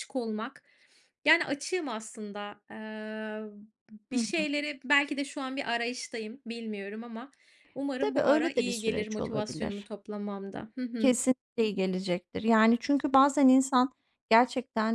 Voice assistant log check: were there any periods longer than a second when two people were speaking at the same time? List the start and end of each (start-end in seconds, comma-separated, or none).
8.0-9.9